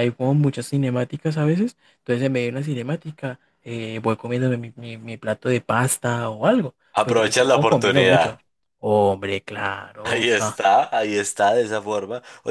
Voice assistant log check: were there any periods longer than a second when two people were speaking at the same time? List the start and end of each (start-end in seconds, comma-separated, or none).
7.0-8.4